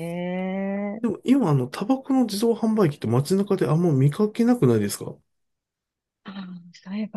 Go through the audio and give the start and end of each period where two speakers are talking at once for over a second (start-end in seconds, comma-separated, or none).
none